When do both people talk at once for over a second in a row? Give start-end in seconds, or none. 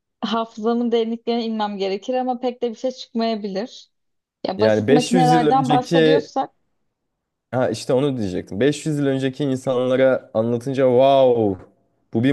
4.6-6.3